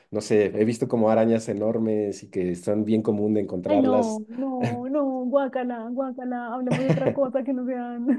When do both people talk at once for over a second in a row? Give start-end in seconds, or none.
none